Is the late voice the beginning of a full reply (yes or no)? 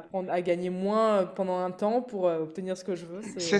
yes